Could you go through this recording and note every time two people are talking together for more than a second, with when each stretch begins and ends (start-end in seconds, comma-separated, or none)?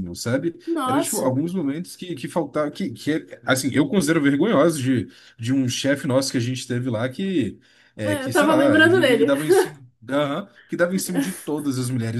8.0-9.3